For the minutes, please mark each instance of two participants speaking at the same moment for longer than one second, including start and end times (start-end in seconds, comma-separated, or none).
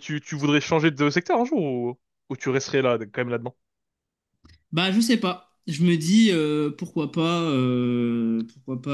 none